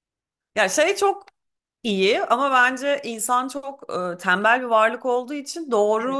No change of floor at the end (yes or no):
yes